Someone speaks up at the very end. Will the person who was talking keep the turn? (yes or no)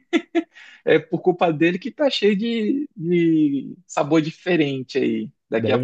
yes